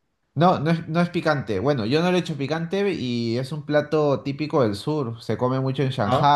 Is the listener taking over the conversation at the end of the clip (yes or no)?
no